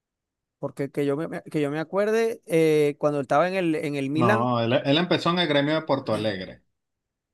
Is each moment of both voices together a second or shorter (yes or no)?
yes